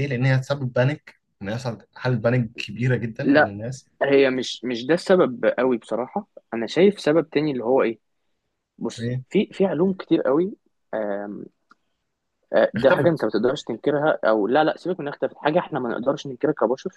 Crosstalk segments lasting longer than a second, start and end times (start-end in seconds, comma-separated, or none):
none